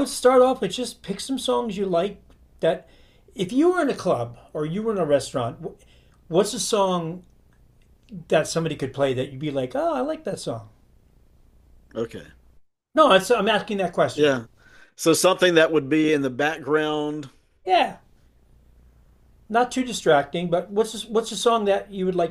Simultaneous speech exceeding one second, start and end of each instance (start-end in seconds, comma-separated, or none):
none